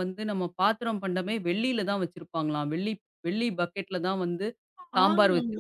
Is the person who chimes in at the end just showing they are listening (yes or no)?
no